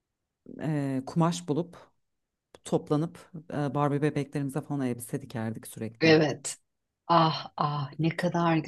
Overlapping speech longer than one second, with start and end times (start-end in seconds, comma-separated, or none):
none